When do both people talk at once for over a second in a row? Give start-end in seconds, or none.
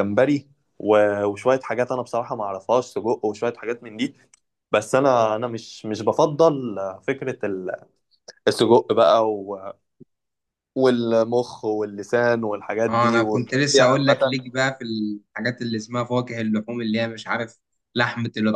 12.9-14.4